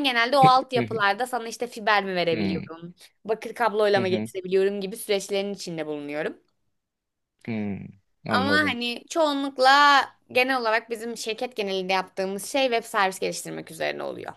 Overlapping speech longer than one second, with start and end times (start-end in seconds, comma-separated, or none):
none